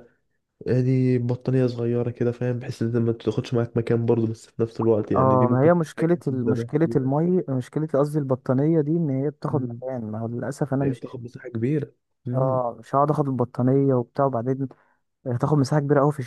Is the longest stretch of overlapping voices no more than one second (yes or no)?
no